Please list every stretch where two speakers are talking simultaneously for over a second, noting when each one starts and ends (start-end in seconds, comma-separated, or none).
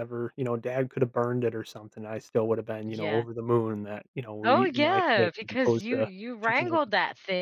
4.4-6.7